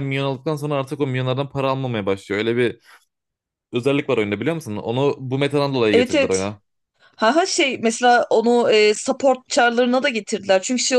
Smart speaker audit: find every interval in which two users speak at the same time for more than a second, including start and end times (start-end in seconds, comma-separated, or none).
none